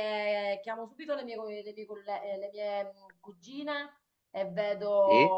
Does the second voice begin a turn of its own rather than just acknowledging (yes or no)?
no